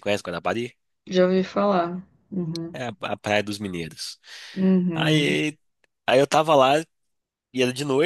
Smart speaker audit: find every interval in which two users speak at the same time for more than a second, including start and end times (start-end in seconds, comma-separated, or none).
none